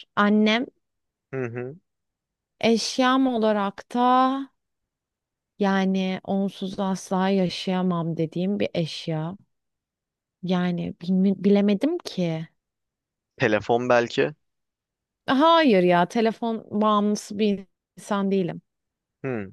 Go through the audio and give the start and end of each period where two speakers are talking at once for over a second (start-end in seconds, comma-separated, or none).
none